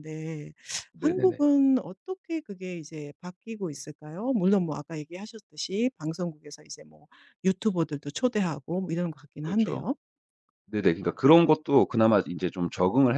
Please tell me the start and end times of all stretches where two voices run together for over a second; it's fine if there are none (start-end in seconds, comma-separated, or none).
none